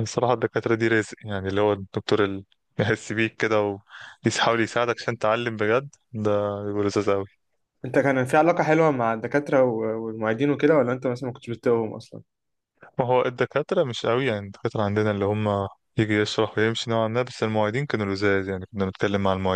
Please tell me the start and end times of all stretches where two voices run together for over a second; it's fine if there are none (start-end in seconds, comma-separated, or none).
none